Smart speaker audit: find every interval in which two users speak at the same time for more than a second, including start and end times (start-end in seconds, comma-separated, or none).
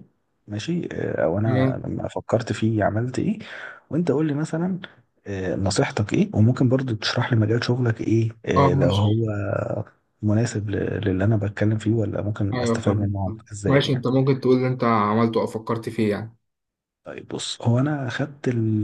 12.5-14.0